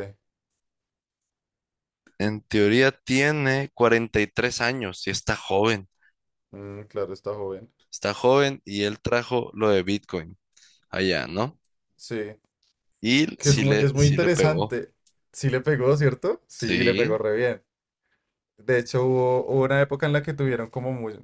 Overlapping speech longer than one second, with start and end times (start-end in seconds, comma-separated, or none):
13.4-14.8